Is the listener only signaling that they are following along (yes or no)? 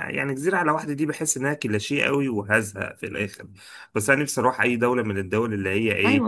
yes